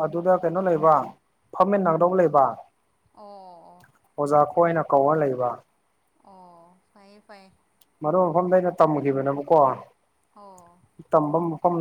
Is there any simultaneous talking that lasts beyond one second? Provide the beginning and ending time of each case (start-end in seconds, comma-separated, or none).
none